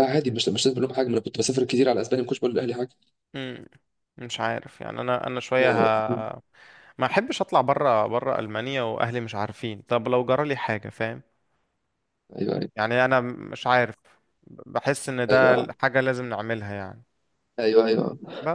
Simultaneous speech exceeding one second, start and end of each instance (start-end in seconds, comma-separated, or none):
none